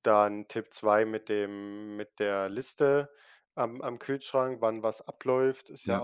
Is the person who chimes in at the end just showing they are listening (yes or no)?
yes